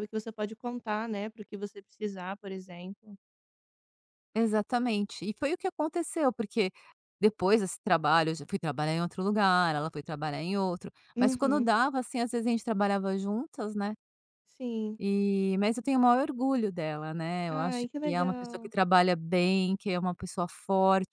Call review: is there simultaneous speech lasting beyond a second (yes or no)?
yes